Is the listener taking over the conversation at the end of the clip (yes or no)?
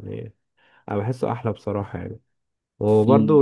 no